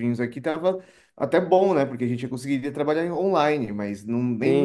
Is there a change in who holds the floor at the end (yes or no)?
yes